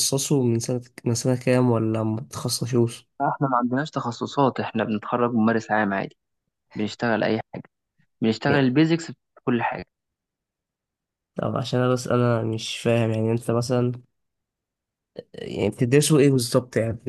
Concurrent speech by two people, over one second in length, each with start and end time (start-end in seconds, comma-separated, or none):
none